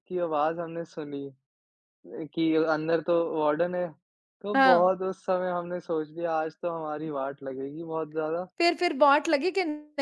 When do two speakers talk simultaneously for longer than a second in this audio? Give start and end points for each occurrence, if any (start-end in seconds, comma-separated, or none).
none